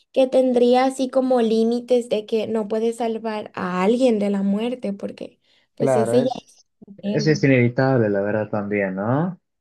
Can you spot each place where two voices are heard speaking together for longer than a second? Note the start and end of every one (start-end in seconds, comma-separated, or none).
5.8-7.4